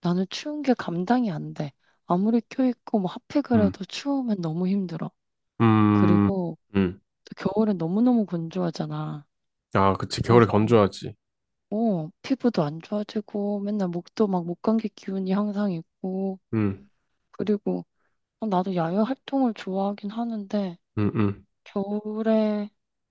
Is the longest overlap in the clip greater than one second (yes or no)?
no